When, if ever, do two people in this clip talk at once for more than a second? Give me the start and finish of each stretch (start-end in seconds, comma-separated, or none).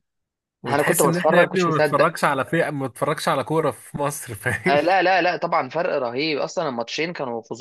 0.7-2.1